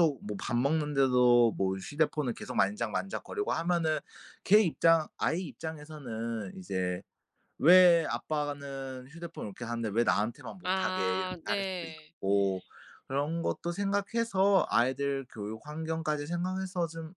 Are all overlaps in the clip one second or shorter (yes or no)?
no